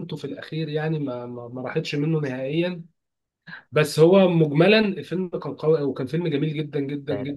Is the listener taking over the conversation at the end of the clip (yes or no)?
yes